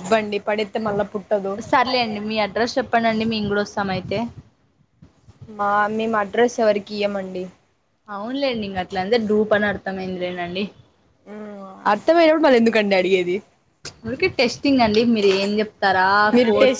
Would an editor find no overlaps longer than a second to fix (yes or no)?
yes